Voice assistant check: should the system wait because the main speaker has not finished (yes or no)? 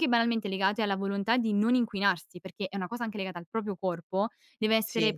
yes